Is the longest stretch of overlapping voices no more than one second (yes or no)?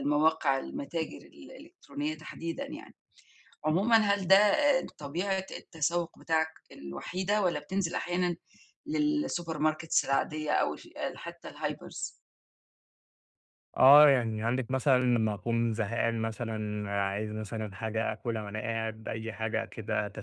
yes